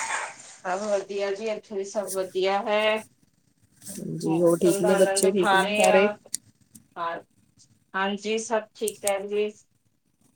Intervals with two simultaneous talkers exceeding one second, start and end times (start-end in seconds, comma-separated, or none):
4.2-6.1